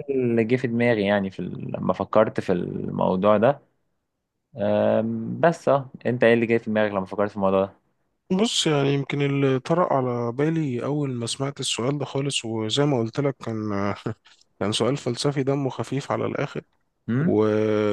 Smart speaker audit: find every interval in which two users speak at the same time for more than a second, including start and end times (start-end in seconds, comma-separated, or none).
none